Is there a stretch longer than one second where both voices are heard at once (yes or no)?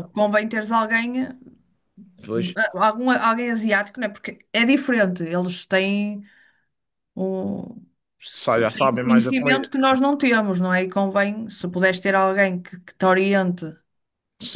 yes